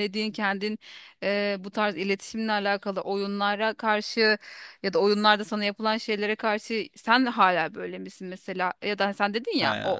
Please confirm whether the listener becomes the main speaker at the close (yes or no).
no